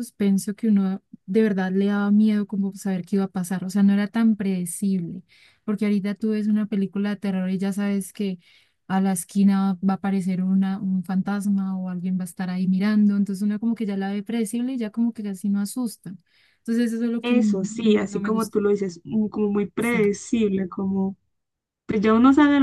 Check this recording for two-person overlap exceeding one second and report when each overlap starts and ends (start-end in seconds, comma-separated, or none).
17.2-18.6